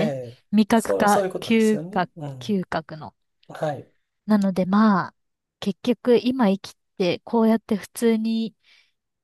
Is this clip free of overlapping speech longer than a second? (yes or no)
no